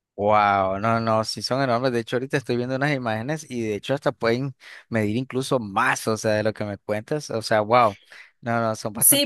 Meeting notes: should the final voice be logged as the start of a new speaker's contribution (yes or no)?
yes